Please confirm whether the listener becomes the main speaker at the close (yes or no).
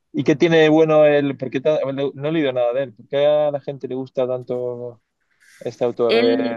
yes